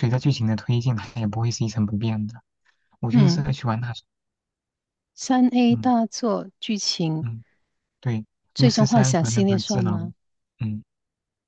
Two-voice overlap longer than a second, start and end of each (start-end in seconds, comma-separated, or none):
8.6-10.0